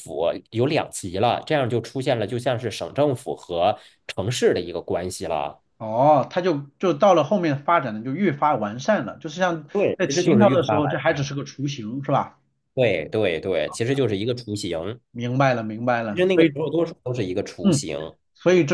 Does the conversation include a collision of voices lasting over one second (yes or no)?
yes